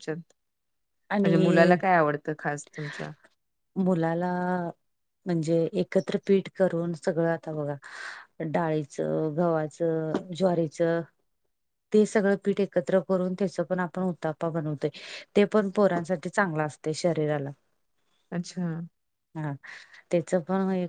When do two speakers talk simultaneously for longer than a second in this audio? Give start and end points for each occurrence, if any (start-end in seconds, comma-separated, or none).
none